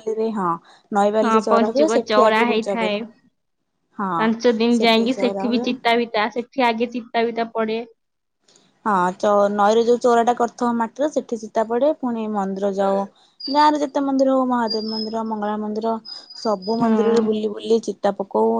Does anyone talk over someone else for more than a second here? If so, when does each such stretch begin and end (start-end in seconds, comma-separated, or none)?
1.2-3.0